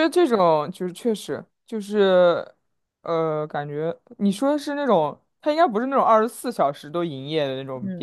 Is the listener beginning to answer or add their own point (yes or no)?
yes